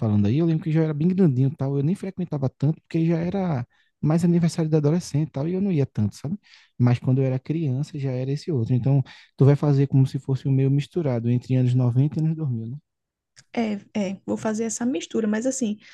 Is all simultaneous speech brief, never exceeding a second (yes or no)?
yes